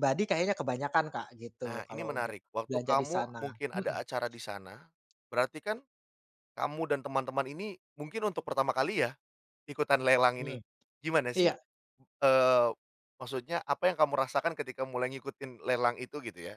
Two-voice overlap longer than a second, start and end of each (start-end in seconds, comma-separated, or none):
1.6-4.1